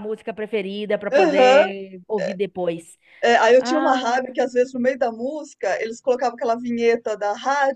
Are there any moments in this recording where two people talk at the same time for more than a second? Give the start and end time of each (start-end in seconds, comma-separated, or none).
none